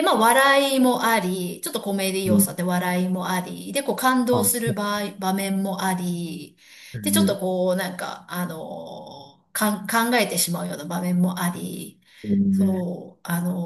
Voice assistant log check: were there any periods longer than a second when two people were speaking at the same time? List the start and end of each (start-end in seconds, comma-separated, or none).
none